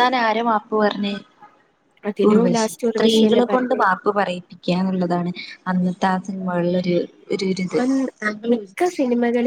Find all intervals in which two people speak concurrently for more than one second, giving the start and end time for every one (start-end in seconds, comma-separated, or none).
2.3-3.8